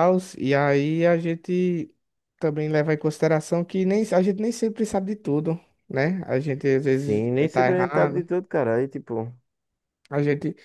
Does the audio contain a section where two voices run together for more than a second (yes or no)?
yes